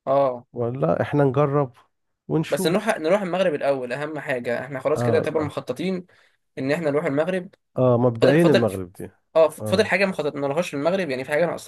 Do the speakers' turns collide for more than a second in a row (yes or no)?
no